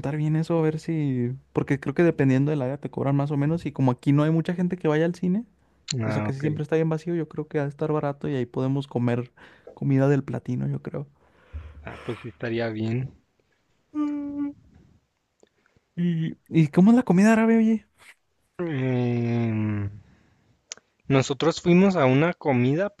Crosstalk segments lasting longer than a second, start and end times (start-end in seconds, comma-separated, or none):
none